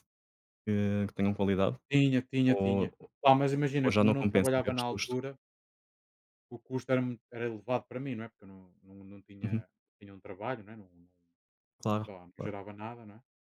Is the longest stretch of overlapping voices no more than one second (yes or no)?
no